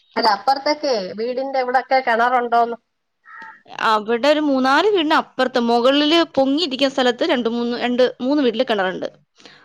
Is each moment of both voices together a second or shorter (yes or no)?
yes